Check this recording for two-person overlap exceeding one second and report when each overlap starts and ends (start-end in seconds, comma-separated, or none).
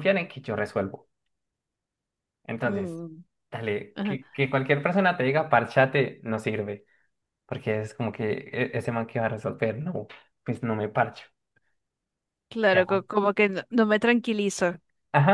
none